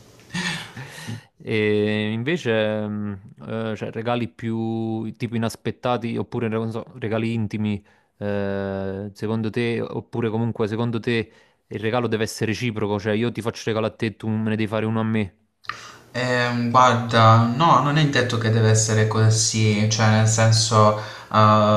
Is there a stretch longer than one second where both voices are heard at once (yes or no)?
no